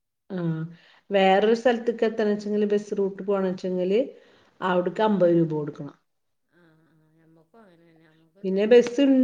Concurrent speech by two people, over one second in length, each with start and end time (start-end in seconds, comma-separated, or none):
none